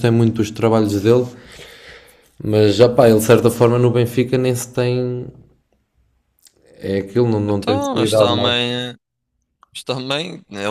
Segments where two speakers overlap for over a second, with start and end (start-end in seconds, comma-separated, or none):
7.5-8.7